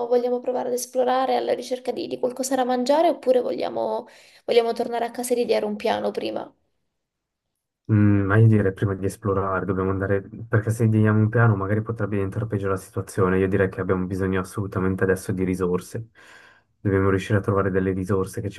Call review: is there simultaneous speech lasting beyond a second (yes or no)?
no